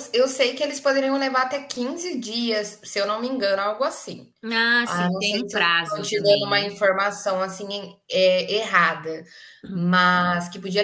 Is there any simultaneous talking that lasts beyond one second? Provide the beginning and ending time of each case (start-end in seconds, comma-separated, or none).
4.8-6.7